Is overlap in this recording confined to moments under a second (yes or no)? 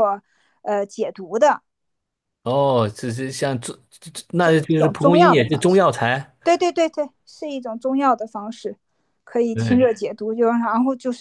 no